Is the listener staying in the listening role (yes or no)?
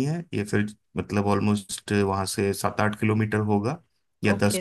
no